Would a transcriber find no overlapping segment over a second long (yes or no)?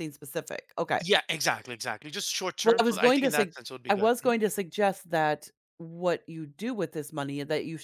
no